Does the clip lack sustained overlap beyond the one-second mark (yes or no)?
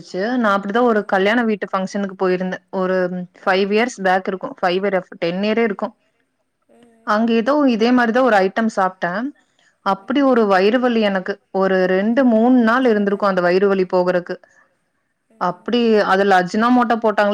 no